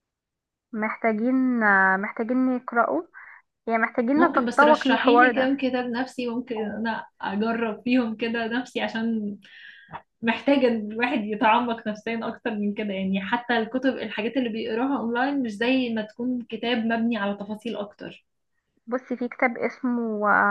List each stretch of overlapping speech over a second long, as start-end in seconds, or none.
4.2-5.5